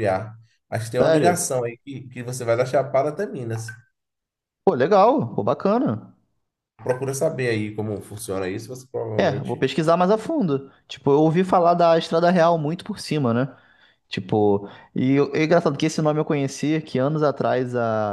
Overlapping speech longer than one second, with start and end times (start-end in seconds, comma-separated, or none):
none